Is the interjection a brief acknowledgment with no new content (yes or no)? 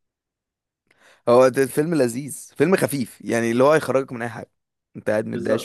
no